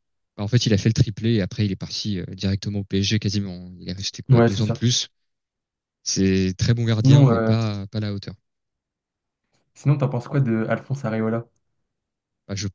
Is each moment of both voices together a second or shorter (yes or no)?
yes